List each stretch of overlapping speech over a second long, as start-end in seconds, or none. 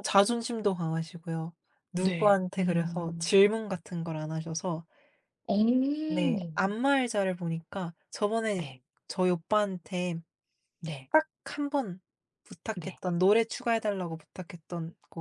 1.9-3.4